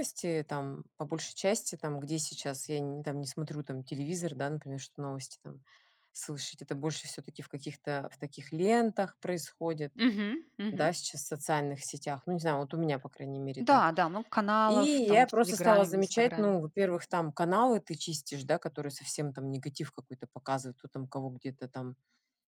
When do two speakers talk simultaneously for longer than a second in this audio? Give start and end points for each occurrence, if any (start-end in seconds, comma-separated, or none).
14.6-16.6